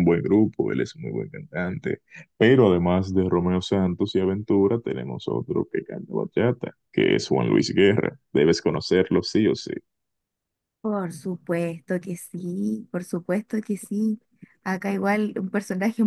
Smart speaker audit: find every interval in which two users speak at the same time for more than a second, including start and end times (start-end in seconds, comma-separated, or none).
none